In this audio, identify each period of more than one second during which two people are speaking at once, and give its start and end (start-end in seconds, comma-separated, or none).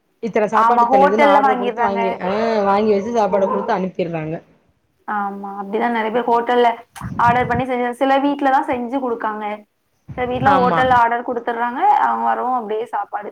0.6-2.0